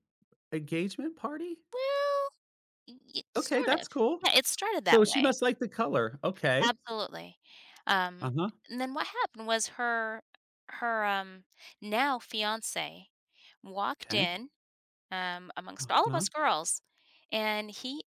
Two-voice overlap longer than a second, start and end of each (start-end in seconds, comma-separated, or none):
none